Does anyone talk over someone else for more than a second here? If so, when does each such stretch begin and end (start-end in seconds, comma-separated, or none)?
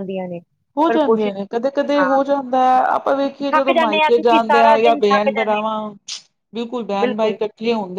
3.5-5.7